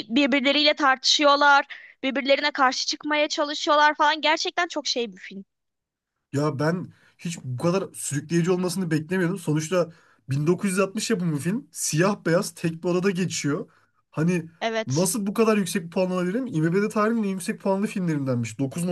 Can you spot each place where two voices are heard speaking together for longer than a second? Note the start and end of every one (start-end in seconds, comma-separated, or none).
none